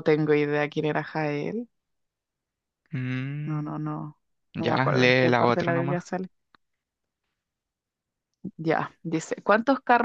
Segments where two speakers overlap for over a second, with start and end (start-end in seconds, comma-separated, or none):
4.6-6.0